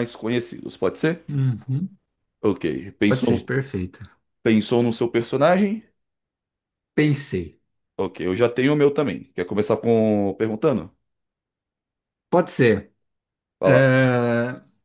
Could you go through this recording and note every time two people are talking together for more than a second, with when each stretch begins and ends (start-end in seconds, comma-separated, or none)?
none